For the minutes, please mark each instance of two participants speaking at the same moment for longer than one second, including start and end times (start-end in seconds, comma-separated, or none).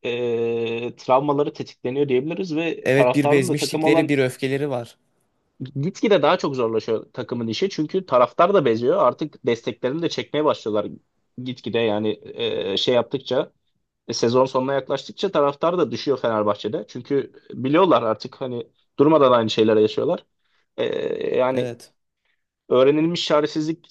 2.8-4.1